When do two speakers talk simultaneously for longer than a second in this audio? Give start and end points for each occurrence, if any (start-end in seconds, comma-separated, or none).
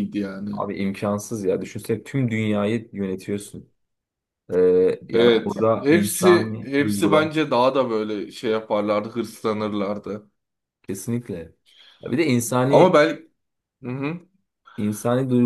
5.1-7.3